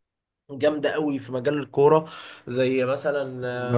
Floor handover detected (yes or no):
yes